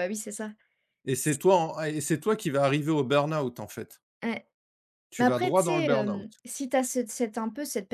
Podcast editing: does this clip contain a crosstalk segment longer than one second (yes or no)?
yes